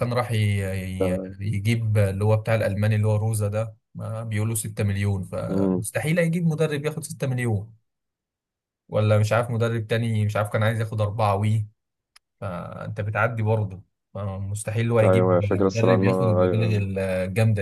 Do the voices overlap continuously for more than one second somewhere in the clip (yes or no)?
yes